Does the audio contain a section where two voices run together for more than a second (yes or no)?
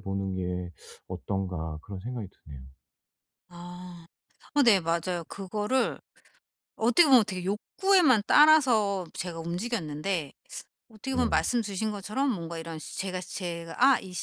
no